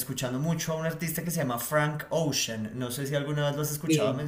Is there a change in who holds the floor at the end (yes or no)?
yes